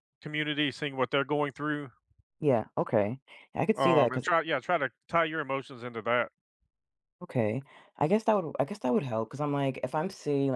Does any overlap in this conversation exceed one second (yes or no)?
no